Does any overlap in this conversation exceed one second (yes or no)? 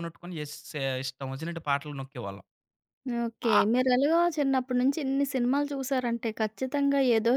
no